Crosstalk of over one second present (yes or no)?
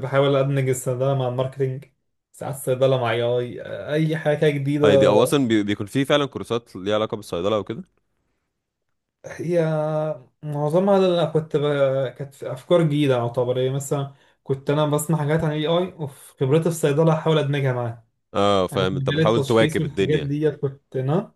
yes